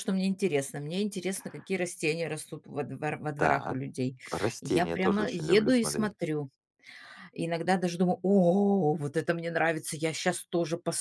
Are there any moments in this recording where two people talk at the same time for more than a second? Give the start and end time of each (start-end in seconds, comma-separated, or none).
4.6-6.2